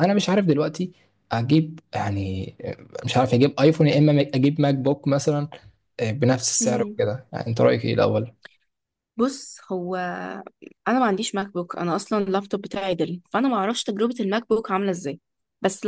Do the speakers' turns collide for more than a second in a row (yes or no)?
no